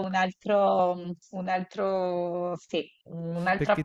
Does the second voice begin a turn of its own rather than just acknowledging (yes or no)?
no